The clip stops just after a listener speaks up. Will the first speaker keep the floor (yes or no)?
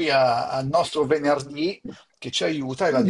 yes